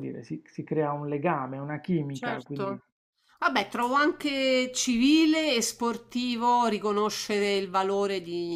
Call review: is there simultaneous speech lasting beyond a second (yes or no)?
no